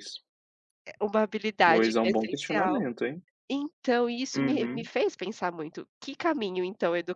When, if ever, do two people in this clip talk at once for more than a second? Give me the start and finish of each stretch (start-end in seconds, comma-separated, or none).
1.6-2.9